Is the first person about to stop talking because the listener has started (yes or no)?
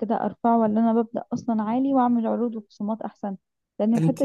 no